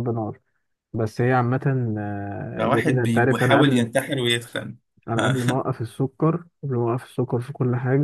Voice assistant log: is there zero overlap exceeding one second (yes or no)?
no